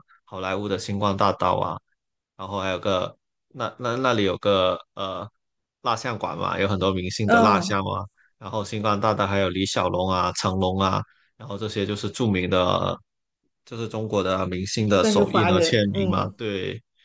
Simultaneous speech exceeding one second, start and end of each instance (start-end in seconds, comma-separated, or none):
15.0-16.4